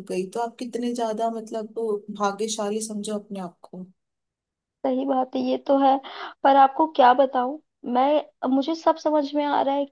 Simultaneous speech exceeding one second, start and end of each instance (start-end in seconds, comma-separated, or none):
none